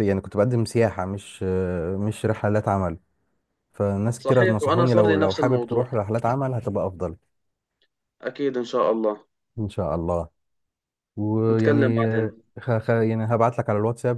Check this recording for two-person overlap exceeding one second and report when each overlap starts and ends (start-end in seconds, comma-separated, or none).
4.2-5.9